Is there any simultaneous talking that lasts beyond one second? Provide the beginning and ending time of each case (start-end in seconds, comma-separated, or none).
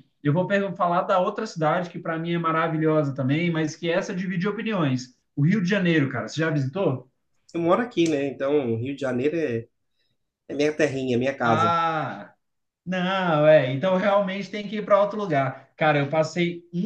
none